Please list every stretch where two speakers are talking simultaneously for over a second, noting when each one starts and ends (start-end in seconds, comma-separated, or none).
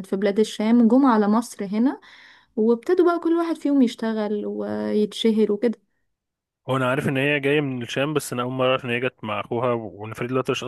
none